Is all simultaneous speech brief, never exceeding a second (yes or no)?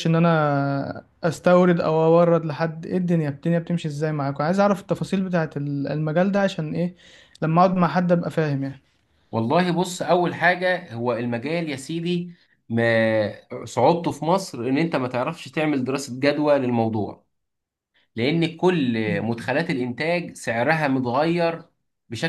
yes